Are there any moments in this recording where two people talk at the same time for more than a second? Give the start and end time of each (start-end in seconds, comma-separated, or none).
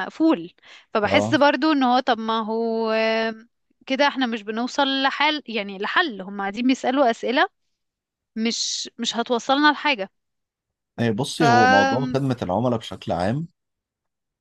none